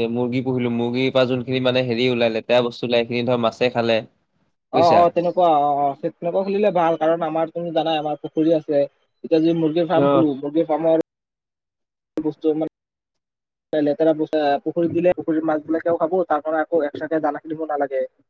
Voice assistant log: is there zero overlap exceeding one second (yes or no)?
yes